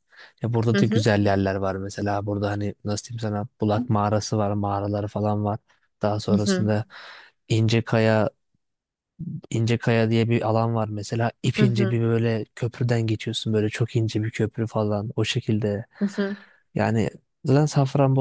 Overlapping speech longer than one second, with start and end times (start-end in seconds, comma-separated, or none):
none